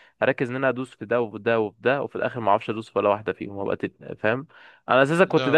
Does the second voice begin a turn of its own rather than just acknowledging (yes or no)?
no